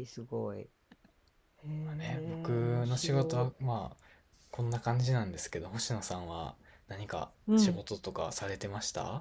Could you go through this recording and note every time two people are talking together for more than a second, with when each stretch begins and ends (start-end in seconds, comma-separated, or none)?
1.9-3.5